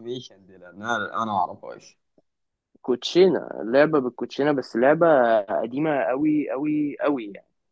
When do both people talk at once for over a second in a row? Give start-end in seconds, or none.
none